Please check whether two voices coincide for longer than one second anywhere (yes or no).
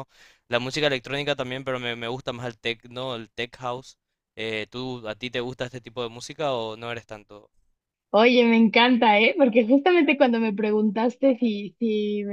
no